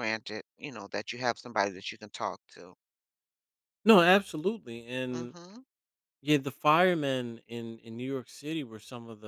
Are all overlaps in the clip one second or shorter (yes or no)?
yes